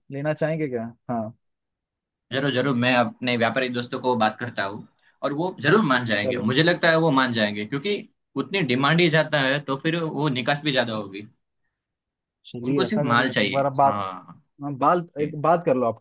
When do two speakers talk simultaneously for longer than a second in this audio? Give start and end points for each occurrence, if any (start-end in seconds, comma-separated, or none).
12.6-14.0